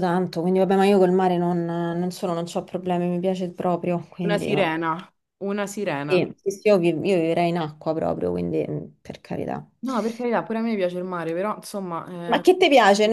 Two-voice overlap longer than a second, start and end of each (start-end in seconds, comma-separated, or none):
none